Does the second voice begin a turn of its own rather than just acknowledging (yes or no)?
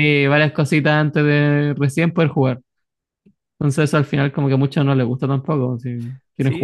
yes